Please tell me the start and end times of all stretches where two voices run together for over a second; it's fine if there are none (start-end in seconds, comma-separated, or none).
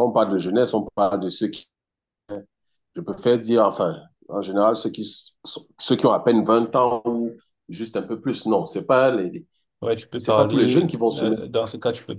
10.2-11.4